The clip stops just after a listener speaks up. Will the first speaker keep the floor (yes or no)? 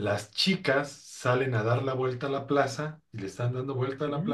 yes